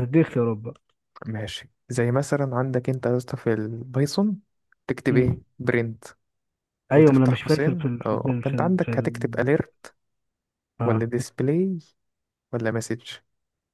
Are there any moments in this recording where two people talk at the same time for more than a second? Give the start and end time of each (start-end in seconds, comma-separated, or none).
6.9-9.5